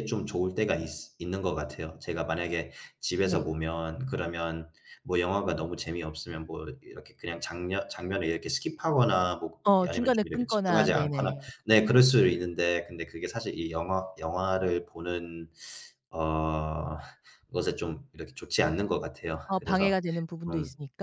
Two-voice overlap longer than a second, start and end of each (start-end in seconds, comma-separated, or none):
9.6-11.4